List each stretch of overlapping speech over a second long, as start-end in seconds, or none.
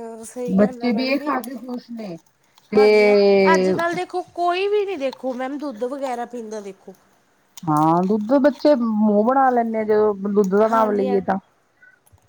none